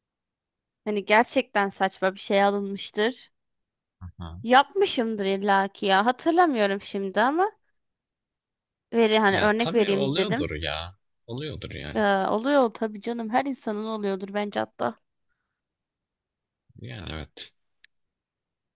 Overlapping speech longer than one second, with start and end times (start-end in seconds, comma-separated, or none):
9.3-10.5